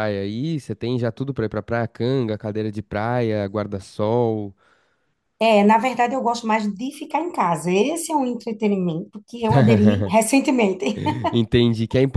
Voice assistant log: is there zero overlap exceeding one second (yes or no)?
yes